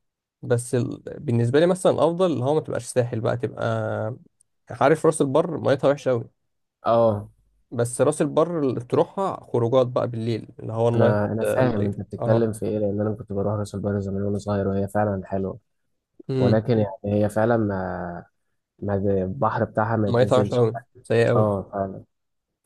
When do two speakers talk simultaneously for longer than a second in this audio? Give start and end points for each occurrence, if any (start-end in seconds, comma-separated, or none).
10.9-12.5